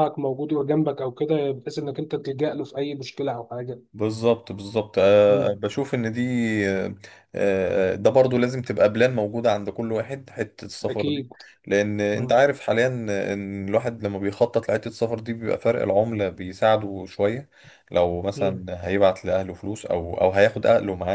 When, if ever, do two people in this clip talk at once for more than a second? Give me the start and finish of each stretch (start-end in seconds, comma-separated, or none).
none